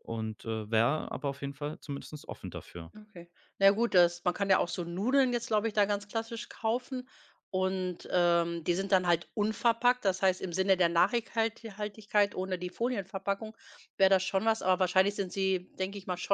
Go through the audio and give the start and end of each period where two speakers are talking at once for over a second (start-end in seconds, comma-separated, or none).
none